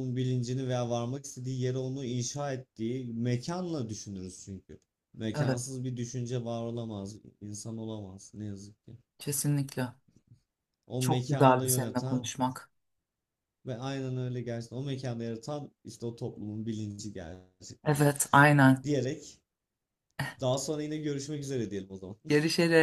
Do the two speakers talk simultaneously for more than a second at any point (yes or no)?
yes